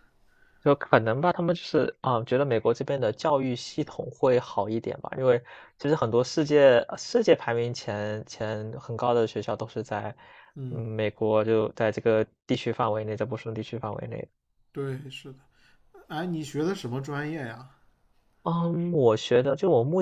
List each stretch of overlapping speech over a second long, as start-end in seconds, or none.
none